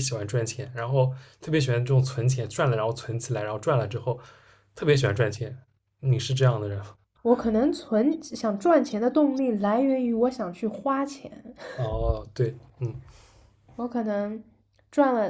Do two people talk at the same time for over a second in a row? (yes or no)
no